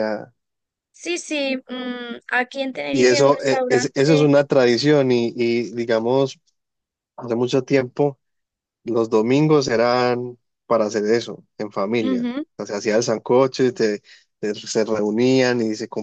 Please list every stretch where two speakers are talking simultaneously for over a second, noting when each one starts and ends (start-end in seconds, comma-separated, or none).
2.9-4.3